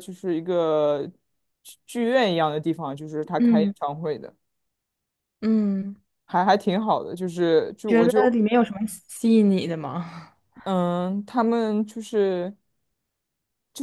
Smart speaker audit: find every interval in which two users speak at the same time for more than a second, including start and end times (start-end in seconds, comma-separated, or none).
none